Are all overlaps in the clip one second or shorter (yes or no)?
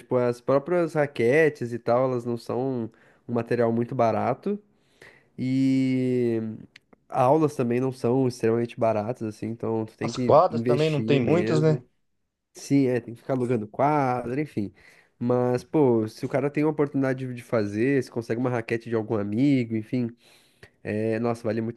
no